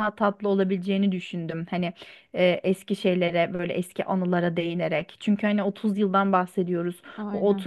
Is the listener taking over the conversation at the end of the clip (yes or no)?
no